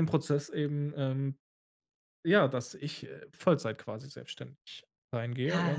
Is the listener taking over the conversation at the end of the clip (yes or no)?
yes